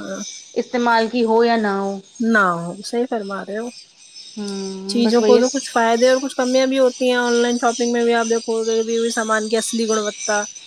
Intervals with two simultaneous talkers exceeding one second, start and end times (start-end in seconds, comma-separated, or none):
none